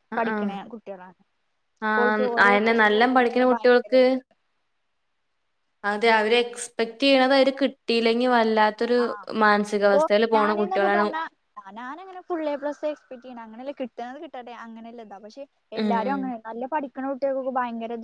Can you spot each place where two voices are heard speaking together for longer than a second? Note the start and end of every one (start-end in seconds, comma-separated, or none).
2.0-4.0